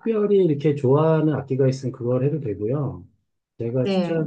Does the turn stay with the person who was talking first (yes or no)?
yes